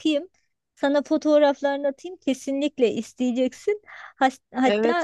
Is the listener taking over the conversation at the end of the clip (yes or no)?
yes